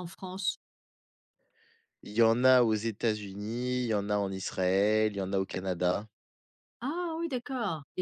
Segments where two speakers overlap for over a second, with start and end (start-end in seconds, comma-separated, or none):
none